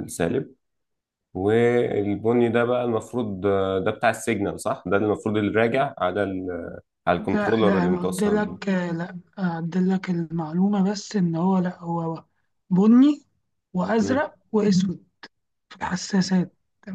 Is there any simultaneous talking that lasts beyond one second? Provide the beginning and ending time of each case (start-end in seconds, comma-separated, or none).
7.2-8.6